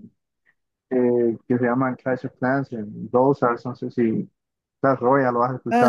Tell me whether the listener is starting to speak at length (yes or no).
yes